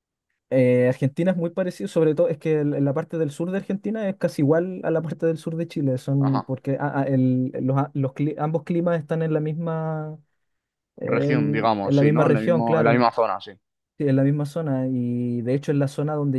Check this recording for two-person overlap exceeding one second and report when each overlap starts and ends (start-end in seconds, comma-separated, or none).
11.0-13.1